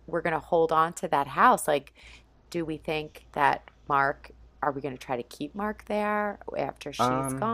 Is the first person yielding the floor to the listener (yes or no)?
yes